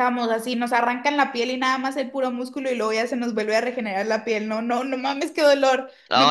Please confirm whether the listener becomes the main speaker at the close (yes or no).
yes